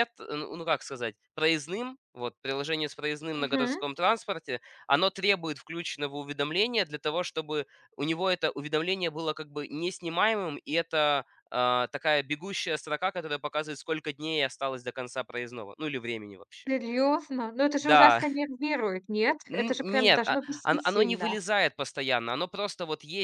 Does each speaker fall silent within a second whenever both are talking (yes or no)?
no